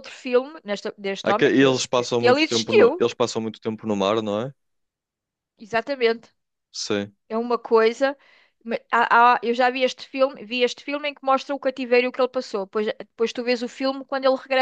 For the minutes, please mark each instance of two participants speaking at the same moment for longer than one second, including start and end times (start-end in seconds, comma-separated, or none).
1.2-3.1